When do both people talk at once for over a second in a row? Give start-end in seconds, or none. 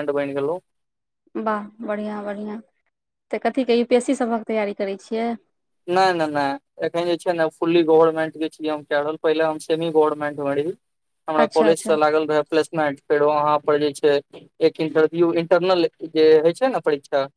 none